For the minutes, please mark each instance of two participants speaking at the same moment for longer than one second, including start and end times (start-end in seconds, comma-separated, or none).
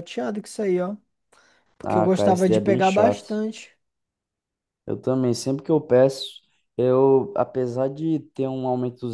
1.8-3.4